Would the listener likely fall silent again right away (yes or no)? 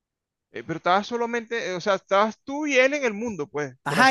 no